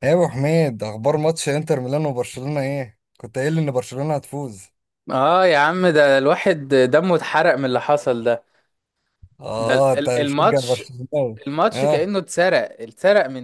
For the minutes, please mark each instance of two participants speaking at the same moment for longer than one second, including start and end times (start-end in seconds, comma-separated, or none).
9.6-10.8